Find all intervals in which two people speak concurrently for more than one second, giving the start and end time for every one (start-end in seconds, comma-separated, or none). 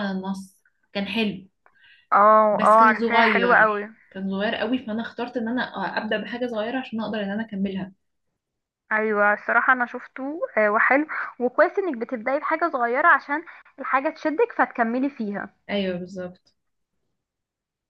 2.5-3.9